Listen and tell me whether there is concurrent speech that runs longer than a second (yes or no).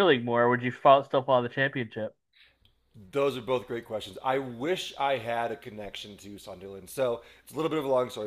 no